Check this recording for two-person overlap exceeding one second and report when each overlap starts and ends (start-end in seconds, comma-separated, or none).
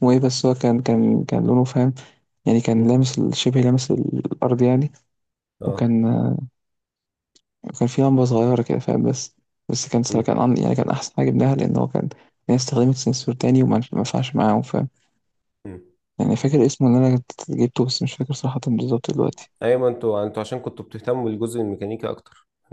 none